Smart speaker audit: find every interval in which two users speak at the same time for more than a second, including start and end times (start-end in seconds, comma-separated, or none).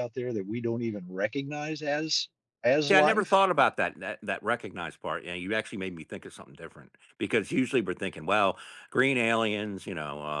none